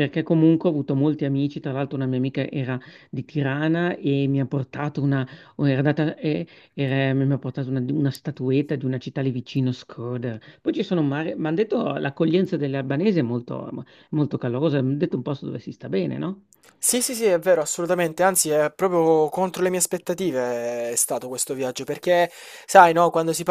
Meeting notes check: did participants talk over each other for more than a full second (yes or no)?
no